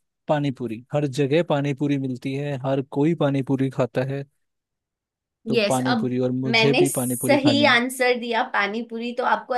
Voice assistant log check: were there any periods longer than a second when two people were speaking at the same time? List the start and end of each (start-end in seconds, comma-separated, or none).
5.5-7.7